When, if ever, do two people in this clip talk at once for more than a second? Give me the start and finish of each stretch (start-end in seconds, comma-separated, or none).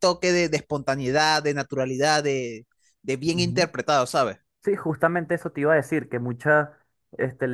none